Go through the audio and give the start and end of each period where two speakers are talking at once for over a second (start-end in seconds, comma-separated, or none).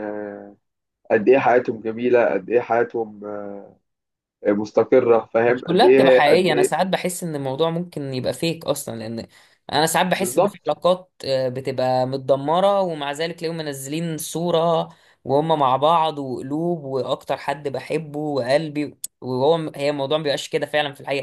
5.5-6.7